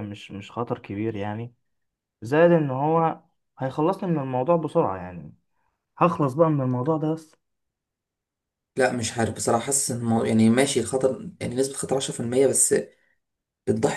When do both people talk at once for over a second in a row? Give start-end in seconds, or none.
none